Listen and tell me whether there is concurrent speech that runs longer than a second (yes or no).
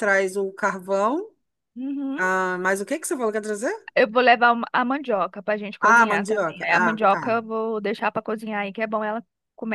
yes